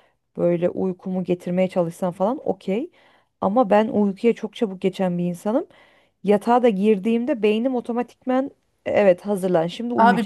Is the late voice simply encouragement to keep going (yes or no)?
no